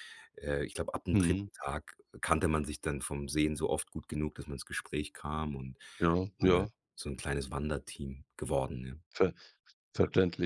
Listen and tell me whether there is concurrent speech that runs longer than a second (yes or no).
no